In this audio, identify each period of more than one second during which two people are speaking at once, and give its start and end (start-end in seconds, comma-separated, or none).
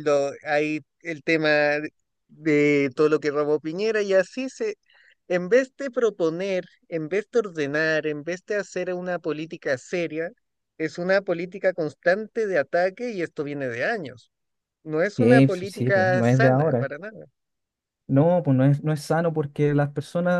15.2-16.9